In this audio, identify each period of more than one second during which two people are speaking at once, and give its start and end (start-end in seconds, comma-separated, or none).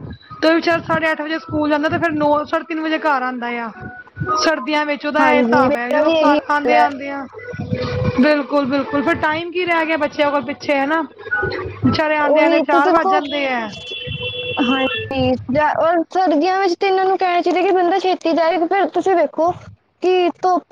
5.2-6.8